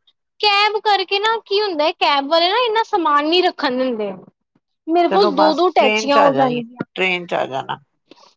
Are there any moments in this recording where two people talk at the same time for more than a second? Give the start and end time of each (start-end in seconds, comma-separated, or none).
5.1-6.8